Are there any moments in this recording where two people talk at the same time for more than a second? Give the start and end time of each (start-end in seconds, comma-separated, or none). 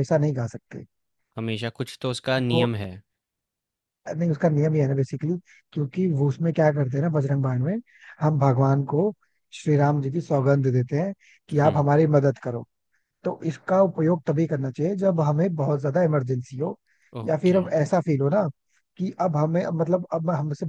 none